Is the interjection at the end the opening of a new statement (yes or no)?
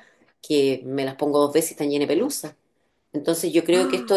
no